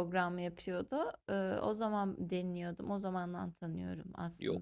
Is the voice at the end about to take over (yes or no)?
yes